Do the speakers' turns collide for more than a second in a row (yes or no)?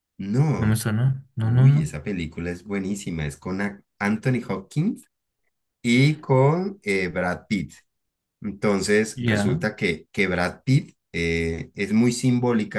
no